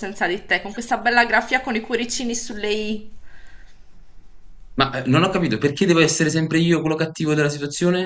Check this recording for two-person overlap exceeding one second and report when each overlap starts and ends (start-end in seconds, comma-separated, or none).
none